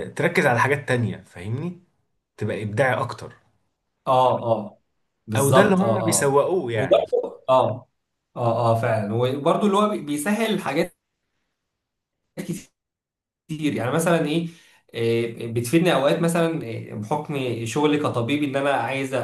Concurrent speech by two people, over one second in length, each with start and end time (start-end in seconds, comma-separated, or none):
5.4-7.0